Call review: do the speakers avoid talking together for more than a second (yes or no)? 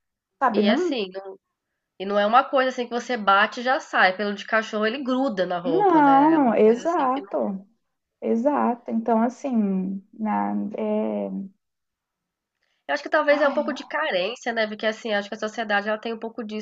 no